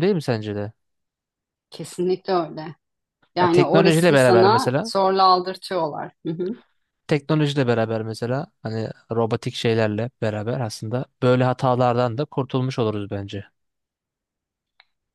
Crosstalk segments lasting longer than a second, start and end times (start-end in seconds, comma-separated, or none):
3.4-4.9